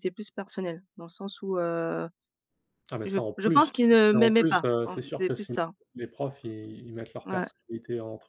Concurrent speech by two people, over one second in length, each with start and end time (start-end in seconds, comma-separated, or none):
3.1-5.5